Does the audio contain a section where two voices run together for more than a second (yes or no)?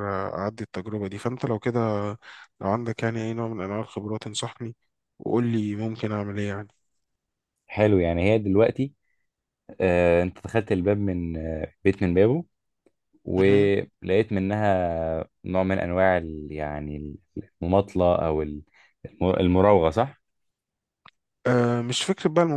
no